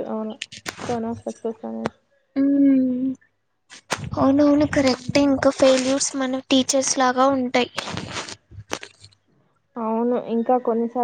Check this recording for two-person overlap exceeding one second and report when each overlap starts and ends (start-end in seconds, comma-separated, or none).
none